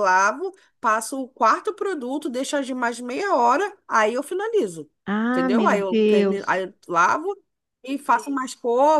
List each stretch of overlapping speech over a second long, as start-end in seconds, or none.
5.3-6.6